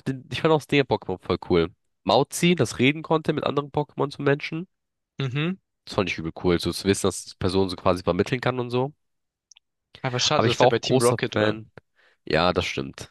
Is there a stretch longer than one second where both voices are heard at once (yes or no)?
yes